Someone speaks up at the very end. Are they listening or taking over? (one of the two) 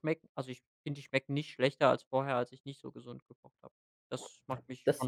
taking over